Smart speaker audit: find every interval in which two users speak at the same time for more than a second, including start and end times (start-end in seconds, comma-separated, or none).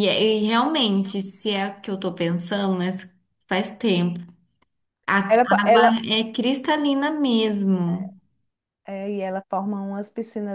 none